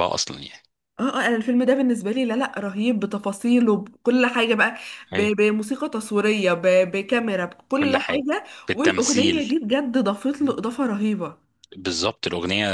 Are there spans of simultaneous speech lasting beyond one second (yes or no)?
yes